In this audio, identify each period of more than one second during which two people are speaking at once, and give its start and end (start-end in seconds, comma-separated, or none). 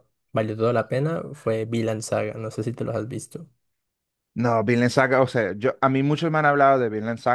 none